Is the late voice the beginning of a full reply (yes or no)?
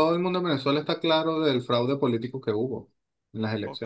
yes